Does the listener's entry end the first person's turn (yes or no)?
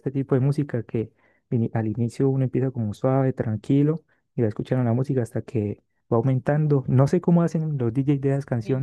no